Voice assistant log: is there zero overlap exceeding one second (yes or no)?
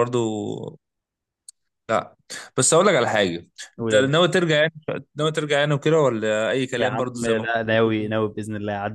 no